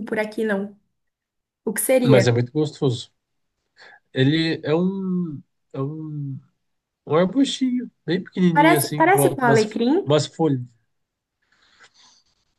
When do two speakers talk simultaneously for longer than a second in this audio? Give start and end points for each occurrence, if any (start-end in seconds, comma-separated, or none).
8.6-10.0